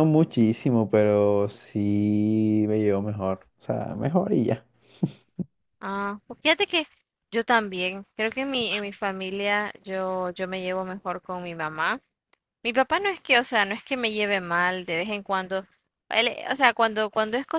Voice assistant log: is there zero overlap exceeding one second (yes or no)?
yes